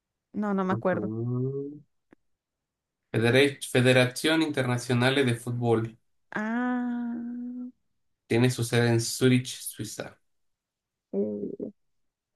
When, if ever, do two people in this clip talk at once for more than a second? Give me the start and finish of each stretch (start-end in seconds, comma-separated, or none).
none